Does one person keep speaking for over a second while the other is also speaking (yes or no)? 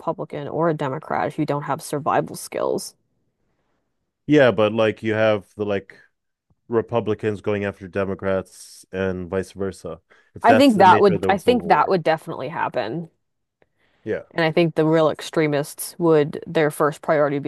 yes